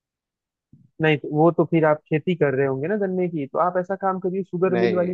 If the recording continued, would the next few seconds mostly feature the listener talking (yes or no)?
no